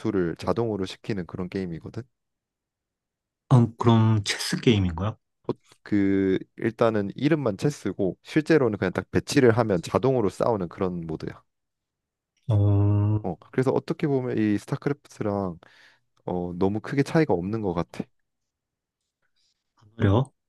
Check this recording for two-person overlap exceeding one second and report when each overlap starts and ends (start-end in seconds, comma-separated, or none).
none